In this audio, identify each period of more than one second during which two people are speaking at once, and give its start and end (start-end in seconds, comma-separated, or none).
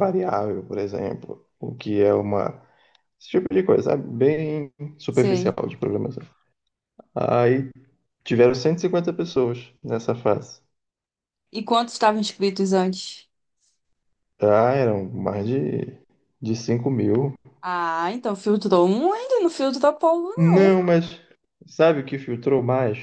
none